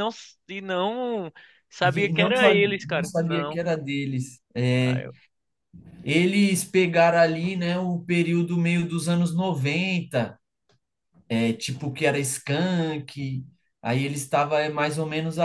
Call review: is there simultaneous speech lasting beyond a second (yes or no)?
yes